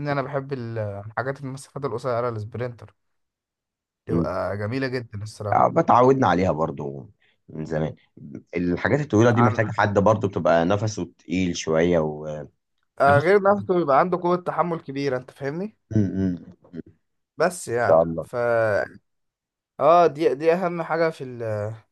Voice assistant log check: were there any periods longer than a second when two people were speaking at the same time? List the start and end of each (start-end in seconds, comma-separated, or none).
none